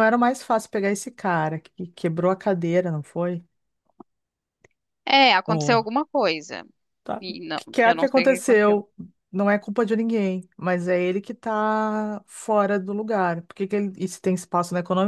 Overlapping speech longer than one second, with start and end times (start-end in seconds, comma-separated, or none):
7.2-8.8